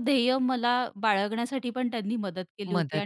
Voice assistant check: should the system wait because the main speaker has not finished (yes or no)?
yes